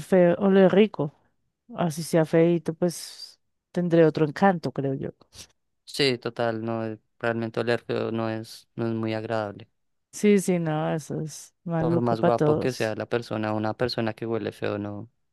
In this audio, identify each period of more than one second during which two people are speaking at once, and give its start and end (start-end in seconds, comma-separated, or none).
11.8-13.0